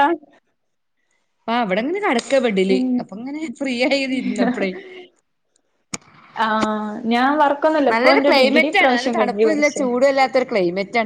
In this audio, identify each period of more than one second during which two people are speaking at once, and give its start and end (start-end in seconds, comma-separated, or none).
7.9-9.9